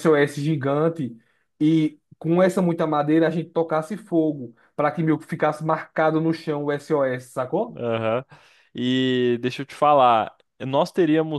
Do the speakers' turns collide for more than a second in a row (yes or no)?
no